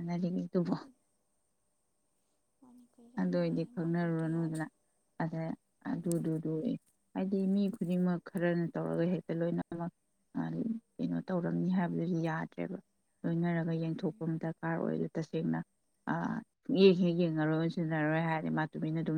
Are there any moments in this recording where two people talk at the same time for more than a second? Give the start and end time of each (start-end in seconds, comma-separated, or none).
3.2-4.6